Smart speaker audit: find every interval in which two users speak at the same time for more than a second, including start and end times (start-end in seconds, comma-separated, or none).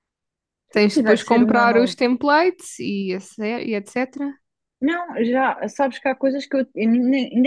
0.7-2.0